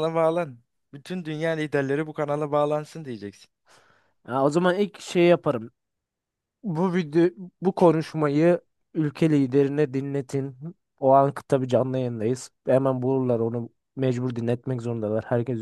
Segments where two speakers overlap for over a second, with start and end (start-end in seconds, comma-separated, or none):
none